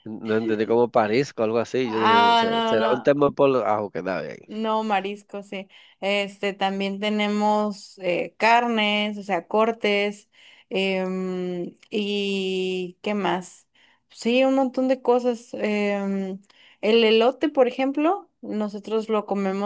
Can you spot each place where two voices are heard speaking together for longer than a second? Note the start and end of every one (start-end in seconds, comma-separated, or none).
1.8-3.2